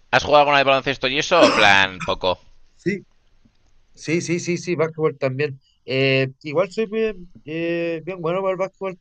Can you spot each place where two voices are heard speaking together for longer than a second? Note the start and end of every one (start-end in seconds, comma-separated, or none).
none